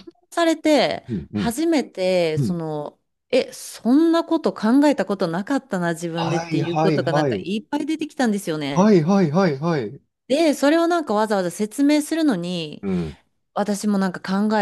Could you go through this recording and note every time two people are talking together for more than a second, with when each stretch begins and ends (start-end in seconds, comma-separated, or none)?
6.1-7.5